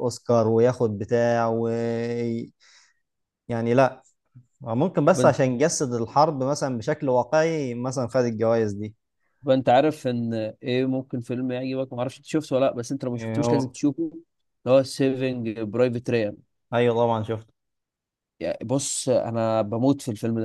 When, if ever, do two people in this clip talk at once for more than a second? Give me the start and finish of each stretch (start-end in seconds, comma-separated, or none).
none